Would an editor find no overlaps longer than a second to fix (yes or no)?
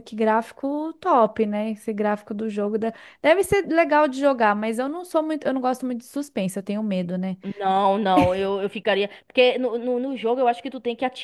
yes